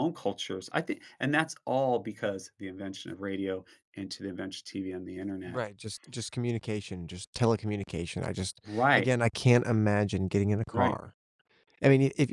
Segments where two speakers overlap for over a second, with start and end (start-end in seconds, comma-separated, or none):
none